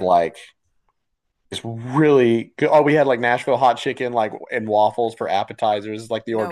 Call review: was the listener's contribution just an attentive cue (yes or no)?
yes